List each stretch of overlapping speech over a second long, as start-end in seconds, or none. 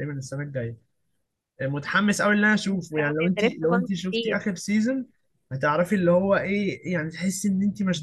2.6-4.4